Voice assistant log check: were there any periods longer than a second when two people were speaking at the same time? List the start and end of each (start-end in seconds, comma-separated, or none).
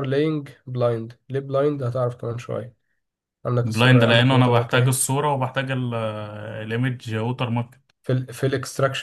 3.6-5.0